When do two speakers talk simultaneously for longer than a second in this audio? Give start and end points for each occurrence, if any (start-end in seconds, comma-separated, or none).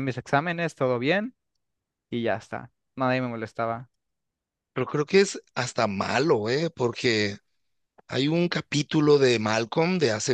none